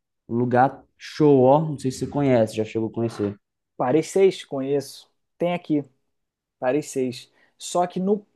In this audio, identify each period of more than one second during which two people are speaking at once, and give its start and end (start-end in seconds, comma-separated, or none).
none